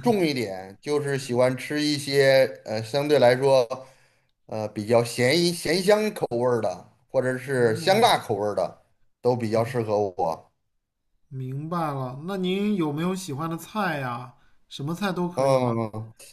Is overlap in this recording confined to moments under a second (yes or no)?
yes